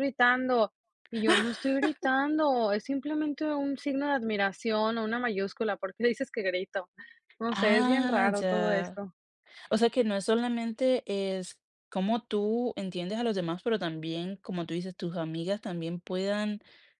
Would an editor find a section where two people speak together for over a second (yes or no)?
yes